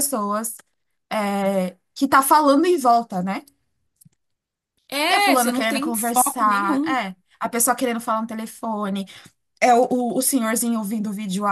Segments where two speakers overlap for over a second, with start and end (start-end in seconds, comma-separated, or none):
5.1-7.0